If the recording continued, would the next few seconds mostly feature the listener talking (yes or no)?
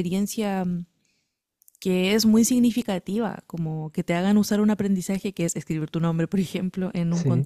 no